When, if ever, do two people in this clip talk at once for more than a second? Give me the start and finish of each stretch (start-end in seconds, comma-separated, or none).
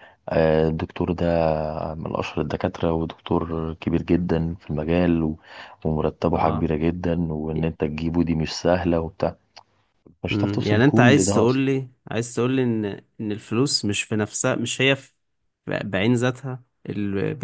10.3-11.7